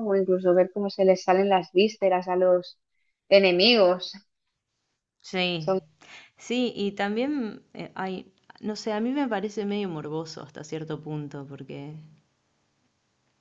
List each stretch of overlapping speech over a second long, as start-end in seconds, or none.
none